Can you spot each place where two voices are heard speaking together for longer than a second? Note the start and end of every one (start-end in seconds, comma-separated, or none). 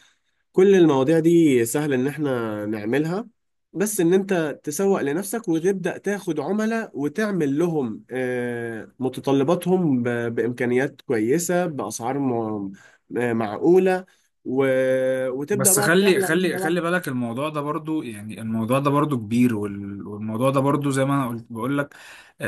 15.5-16.8